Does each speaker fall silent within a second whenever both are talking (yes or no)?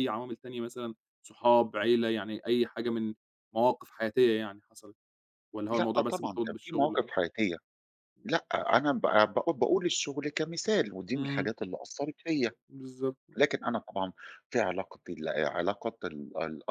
no